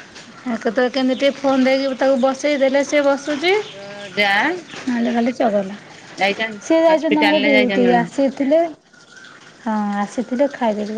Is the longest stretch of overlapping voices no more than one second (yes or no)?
no